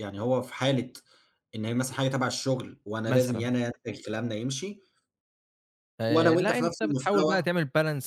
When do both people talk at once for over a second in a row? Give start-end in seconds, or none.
6.1-7.5